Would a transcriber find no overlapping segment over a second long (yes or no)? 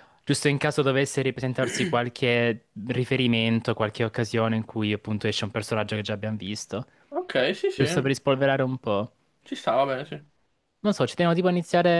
yes